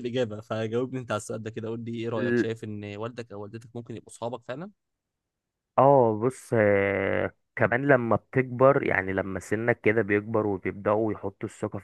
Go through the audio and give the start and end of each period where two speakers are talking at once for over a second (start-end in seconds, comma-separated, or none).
none